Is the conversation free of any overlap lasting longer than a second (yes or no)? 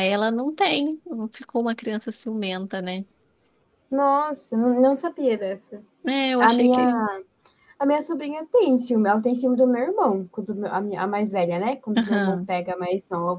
yes